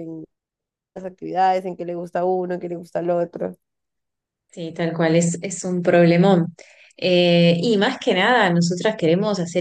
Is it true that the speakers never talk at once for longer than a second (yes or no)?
yes